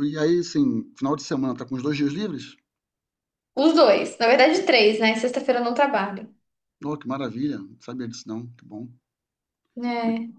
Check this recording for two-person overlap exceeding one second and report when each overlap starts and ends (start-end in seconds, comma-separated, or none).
none